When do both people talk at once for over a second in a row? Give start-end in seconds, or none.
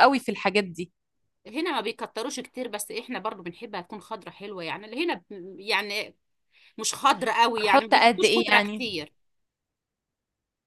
7.6-8.8